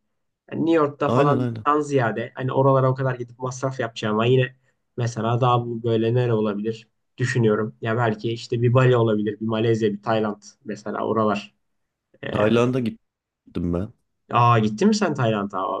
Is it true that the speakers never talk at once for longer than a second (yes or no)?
yes